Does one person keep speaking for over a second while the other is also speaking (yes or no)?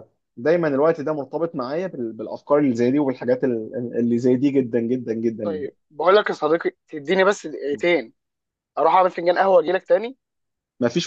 no